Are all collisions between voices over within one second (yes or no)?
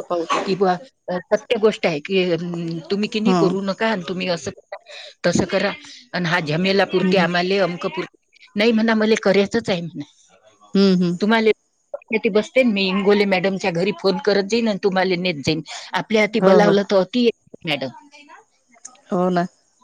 yes